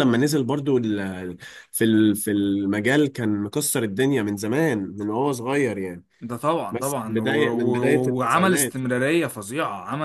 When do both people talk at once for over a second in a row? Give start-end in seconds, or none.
6.7-8.8